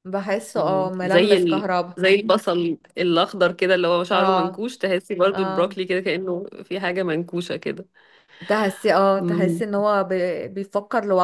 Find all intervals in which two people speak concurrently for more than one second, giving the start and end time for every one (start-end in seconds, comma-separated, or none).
0.5-2.0